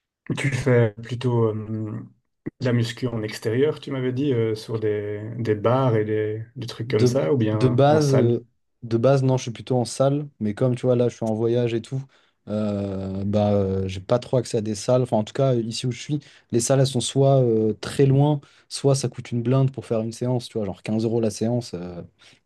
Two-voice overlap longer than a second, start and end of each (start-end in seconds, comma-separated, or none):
6.9-8.4